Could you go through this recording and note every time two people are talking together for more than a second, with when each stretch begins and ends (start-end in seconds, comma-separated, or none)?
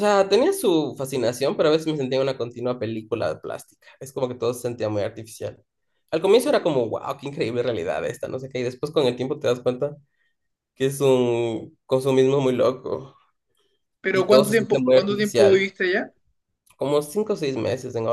14.1-15.7